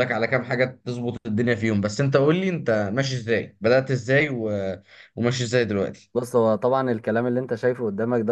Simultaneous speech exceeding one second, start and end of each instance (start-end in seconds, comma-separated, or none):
none